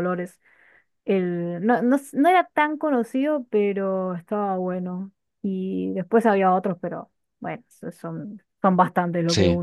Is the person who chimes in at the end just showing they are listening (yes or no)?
no